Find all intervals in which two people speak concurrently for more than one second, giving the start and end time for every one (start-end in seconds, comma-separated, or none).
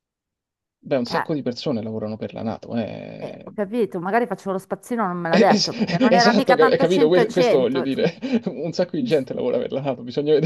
5.3-7.9